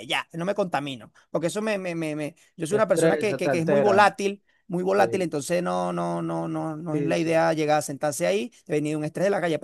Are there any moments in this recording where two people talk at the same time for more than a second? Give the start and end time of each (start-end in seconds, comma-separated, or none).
2.7-4.2